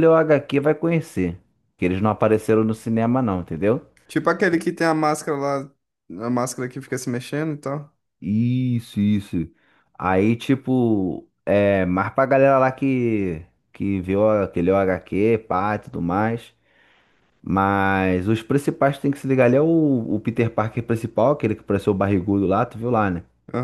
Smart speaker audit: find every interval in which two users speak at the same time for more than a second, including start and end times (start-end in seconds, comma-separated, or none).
none